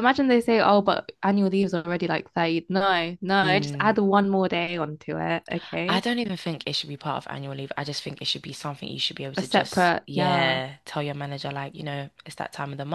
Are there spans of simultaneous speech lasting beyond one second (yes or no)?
yes